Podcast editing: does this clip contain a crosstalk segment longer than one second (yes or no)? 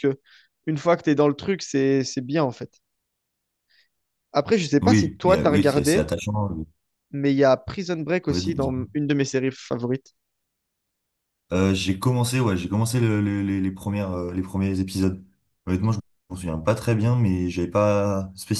yes